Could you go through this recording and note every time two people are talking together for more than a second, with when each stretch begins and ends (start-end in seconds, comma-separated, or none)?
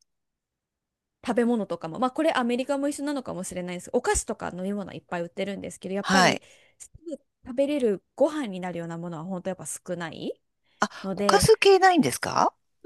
none